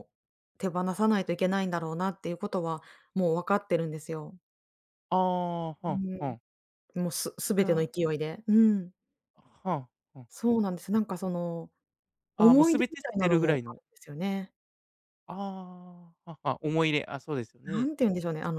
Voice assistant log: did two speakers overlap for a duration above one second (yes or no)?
yes